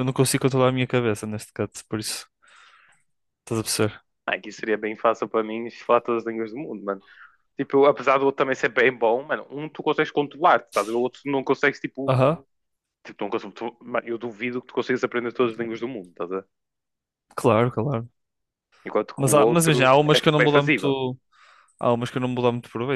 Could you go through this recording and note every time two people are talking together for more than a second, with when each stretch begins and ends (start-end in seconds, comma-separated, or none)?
19.2-20.9